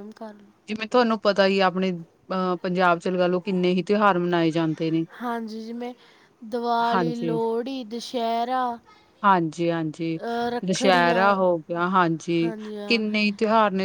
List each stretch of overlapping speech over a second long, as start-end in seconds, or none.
none